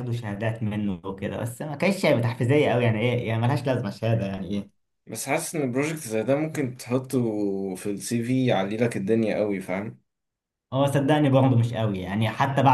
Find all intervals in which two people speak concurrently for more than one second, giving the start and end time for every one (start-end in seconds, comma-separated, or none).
none